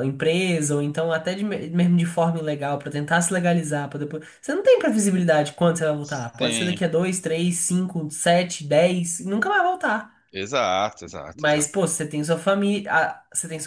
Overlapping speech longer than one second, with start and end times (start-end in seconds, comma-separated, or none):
none